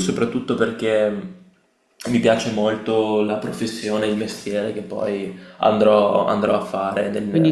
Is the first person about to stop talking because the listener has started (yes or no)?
yes